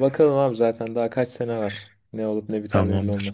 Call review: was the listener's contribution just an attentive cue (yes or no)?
no